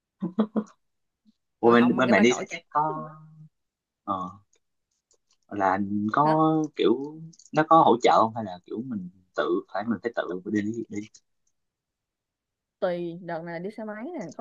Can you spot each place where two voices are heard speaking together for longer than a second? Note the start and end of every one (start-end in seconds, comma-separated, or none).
1.6-3.1